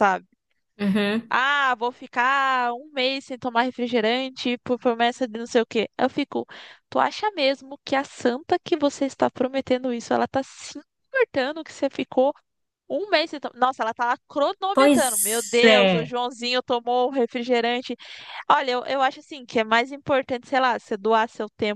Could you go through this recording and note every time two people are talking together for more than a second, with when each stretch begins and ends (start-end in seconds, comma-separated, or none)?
14.7-16.1